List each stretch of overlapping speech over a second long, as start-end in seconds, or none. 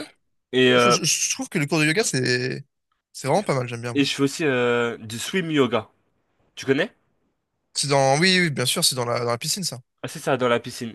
none